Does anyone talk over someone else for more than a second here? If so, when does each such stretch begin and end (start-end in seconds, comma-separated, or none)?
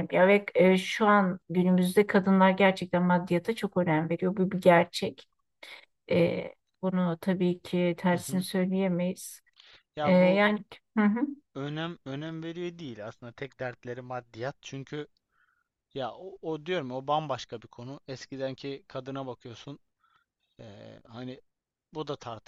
none